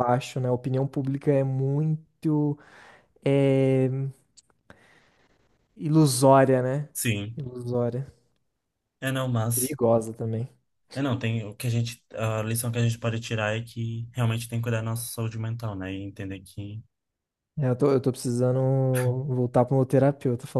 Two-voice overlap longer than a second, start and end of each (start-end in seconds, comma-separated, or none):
none